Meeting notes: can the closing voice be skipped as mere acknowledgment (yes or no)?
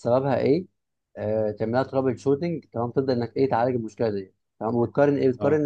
yes